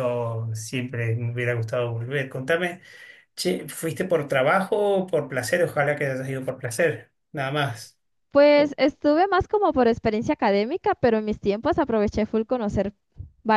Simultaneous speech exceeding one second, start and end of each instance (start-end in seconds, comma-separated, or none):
none